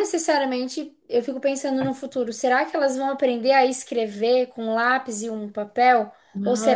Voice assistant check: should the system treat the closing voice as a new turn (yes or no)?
no